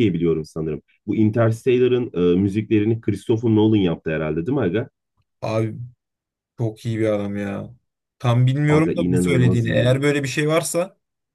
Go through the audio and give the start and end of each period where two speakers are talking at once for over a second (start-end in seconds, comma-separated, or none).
8.7-10.0